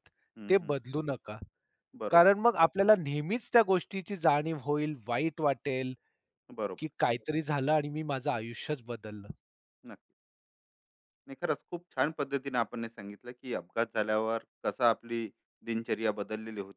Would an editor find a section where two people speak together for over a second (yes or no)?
no